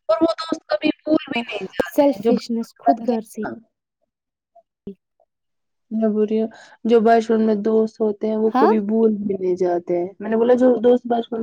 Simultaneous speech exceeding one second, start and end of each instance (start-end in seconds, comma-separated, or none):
1.9-3.4